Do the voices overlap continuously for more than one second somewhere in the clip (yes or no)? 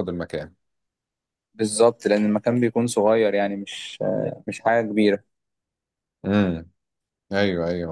no